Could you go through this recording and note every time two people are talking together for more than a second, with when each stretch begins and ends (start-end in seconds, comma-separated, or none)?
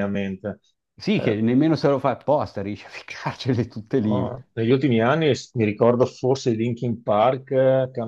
none